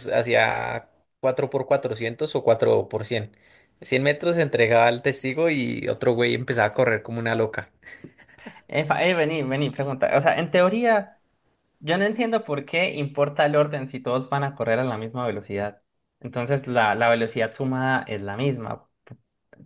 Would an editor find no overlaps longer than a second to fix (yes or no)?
yes